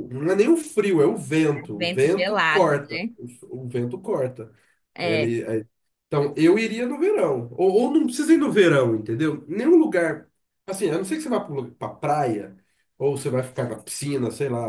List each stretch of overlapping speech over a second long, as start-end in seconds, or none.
1.6-3.1